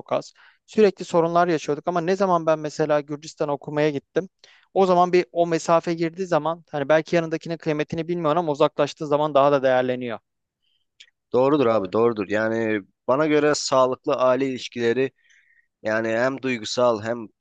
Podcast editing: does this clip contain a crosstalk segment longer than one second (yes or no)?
no